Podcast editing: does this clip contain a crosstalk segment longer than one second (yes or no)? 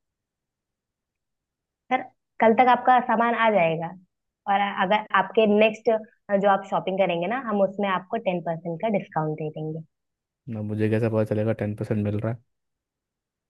no